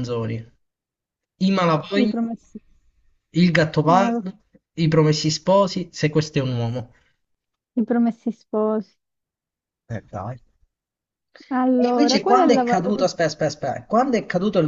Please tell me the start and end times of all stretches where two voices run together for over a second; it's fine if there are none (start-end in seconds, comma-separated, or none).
11.7-13.1